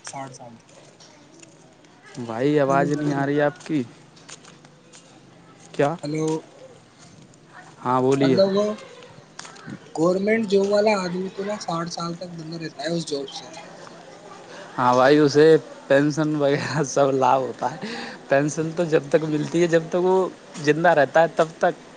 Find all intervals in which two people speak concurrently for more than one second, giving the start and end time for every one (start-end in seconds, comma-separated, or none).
2.2-3.8